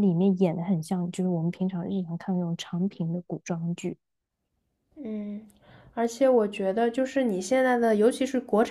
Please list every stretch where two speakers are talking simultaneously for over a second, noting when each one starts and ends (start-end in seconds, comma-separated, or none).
none